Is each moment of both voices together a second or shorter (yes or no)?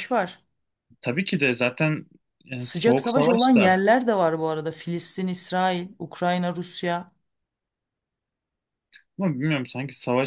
no